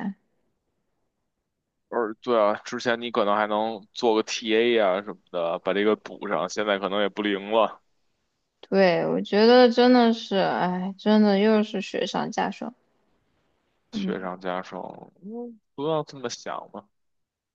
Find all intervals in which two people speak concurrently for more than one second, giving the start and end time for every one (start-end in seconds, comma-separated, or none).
none